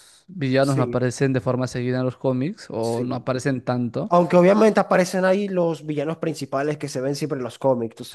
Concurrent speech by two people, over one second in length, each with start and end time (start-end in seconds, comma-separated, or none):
none